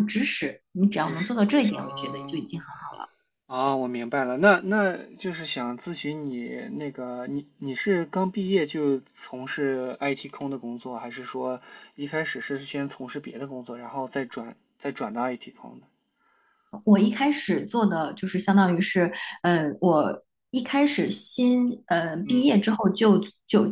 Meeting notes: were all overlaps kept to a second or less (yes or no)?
no